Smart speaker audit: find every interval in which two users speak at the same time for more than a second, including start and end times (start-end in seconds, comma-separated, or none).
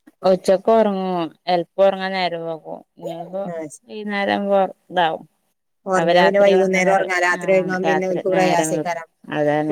6.0-9.0